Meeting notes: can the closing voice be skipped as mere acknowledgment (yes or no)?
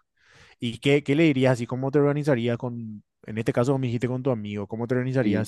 yes